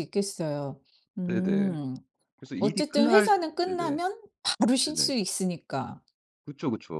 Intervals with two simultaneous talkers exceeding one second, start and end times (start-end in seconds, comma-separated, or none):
2.6-4.0